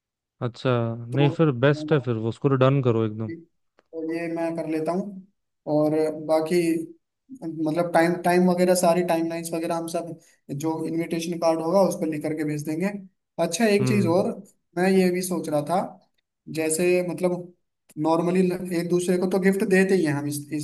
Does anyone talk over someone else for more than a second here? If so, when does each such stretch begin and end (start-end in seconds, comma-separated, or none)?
none